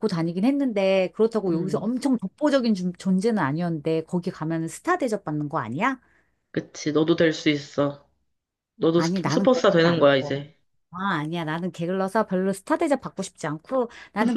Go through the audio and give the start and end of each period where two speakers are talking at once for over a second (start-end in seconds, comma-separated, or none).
9.0-10.5